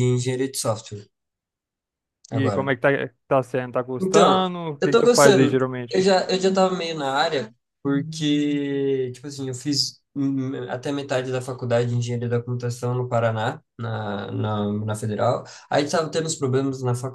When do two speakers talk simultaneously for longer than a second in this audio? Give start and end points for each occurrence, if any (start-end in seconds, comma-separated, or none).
4.0-6.1